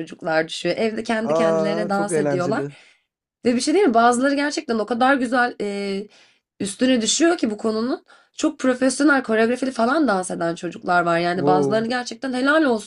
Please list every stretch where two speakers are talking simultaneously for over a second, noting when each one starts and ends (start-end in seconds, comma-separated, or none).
1.2-2.6